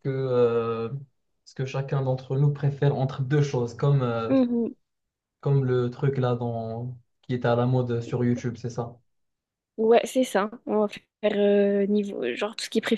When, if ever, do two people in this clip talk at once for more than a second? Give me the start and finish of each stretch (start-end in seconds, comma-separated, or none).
none